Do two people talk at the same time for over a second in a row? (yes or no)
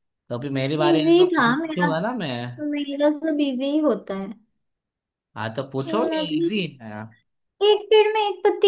yes